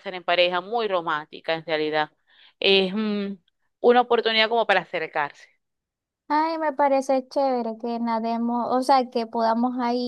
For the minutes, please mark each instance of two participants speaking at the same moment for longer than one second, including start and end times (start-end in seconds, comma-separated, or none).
none